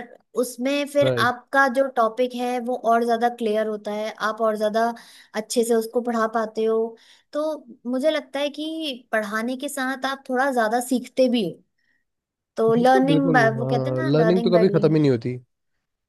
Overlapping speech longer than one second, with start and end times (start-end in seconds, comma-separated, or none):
12.7-14.6